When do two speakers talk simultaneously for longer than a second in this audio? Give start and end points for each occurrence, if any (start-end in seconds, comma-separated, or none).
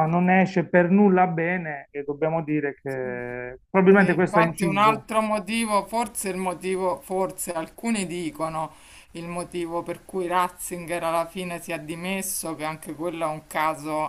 3.9-5.1